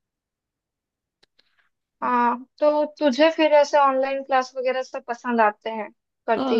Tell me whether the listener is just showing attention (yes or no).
no